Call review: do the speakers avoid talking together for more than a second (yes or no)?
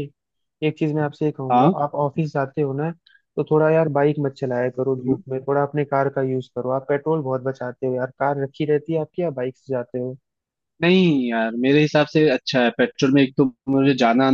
yes